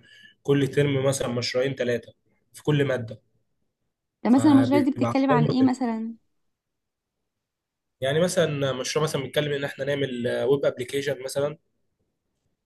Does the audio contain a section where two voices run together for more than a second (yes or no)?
yes